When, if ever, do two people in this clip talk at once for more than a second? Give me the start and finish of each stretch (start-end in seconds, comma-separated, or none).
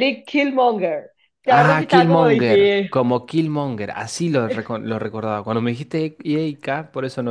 1.5-2.9